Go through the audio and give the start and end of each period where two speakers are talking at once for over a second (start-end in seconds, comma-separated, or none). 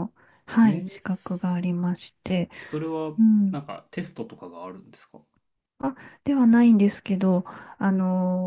none